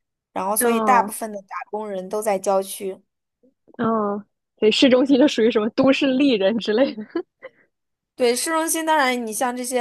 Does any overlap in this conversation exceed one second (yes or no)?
no